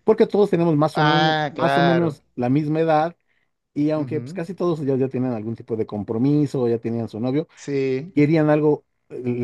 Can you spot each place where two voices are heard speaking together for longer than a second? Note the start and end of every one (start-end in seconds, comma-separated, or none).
0.9-2.2